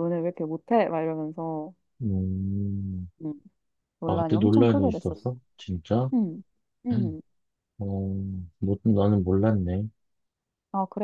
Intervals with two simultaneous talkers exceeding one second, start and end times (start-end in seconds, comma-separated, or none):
4.1-5.3